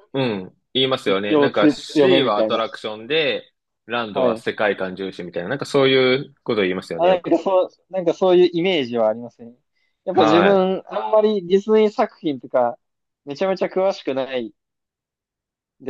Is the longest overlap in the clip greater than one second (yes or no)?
yes